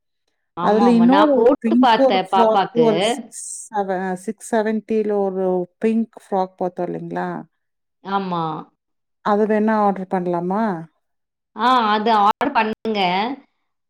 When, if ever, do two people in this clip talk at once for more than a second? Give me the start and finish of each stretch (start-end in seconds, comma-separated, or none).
0.7-2.9